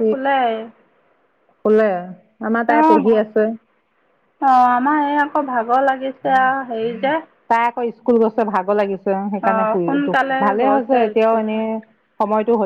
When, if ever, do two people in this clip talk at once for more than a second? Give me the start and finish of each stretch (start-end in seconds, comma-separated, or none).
9.4-11.4